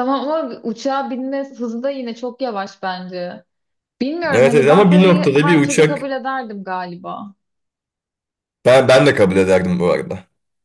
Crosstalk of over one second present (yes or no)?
yes